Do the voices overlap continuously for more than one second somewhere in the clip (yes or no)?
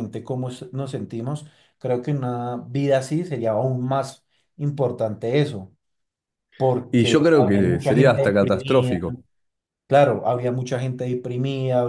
yes